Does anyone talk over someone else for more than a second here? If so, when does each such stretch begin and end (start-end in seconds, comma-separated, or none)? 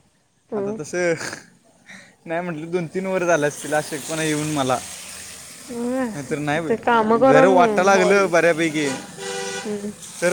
6.7-8.3